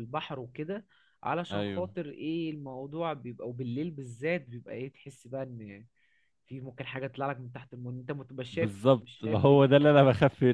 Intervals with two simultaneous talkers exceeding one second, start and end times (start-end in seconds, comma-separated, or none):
8.5-9.9